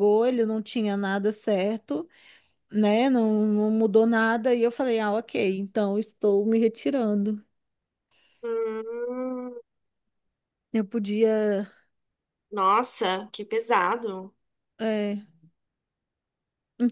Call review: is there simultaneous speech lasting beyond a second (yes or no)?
no